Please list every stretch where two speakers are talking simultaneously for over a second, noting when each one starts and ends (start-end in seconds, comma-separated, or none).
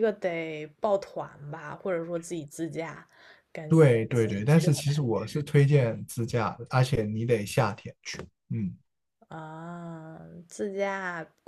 3.7-5.1